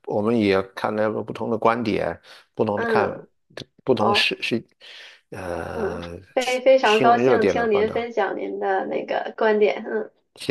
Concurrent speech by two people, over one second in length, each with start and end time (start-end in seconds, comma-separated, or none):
5.7-8.0